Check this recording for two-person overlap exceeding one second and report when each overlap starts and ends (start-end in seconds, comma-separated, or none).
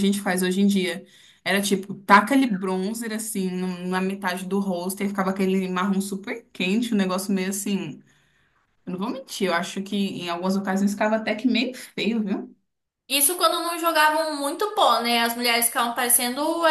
none